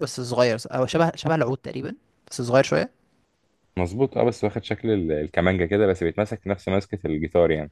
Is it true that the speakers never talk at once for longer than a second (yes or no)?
yes